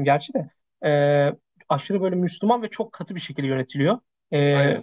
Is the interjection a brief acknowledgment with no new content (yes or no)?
yes